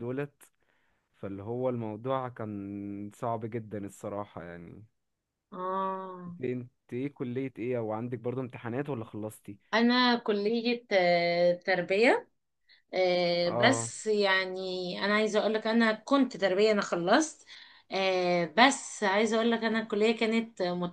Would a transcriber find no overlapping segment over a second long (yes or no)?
yes